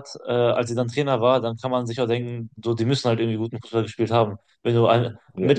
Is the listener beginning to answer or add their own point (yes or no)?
no